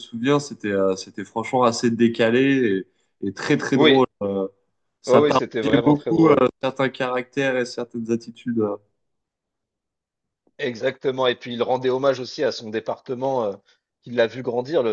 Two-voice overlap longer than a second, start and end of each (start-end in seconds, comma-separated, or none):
5.1-6.4